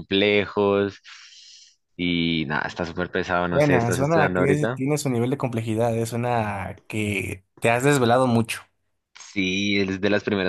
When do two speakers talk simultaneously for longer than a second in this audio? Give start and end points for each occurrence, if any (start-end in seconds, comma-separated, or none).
3.5-4.8